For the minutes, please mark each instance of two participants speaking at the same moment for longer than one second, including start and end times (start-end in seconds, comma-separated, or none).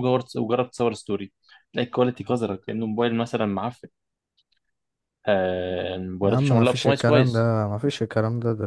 6.2-7.5